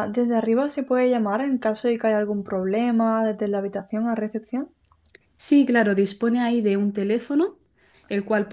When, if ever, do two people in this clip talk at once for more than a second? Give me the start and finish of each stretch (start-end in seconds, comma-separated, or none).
none